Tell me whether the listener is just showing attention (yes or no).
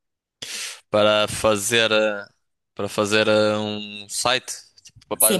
no